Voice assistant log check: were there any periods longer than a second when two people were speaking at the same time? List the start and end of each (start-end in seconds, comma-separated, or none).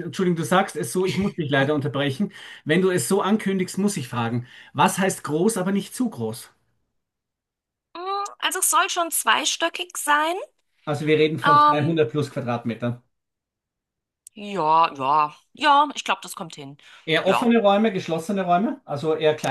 none